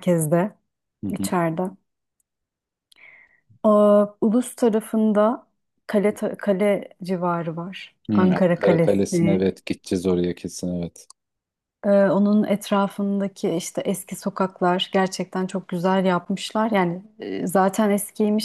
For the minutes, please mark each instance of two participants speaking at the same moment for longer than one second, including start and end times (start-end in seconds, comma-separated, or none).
8.1-9.5